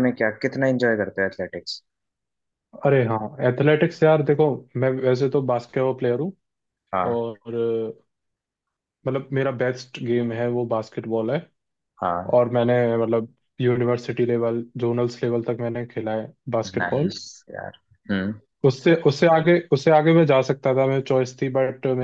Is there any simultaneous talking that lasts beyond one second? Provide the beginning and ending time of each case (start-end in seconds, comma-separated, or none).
none